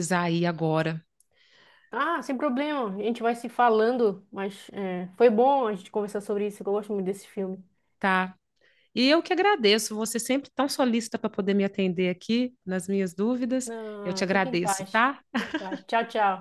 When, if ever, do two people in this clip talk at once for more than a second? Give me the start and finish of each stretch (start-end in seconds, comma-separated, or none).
13.7-15.2